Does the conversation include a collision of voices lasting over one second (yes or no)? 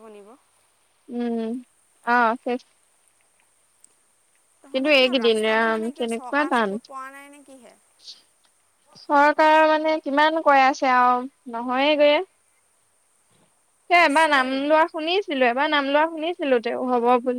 yes